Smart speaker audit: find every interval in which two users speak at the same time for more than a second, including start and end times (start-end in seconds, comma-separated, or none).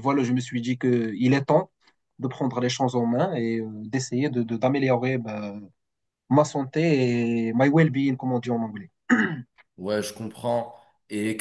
none